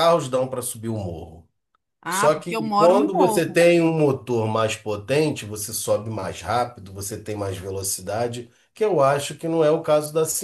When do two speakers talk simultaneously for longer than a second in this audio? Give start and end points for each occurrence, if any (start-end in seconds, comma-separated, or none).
2.1-3.6